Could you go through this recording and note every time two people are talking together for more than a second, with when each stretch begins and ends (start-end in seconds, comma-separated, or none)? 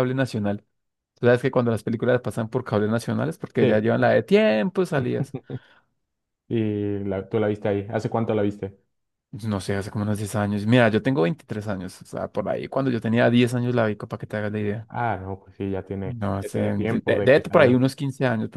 16.0-17.8